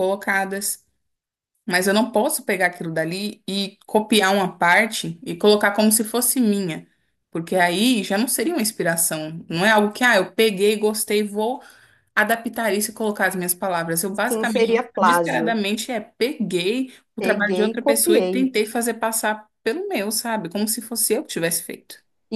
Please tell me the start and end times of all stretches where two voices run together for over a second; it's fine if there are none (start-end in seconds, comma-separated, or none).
14.3-15.6, 17.2-18.5